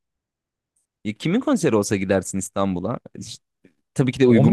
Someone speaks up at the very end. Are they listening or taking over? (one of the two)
listening